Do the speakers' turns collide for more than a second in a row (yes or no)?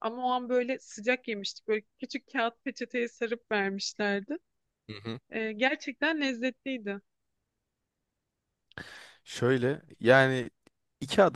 no